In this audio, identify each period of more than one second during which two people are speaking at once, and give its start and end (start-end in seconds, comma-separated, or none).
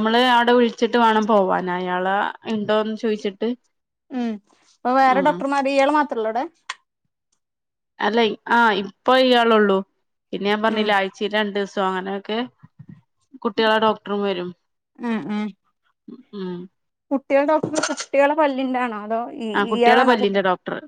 none